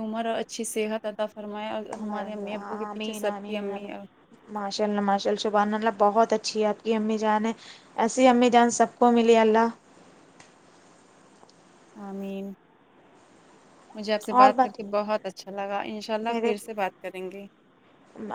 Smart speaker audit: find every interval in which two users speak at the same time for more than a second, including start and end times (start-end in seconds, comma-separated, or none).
2.0-3.9